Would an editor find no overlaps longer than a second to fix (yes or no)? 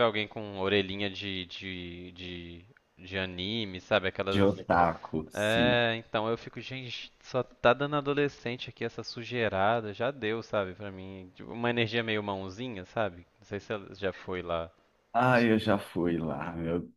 yes